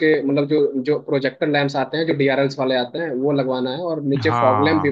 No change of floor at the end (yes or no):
yes